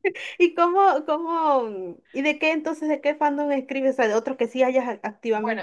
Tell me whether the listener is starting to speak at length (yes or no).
yes